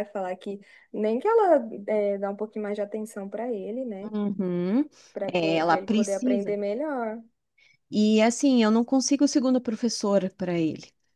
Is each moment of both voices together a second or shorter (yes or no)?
no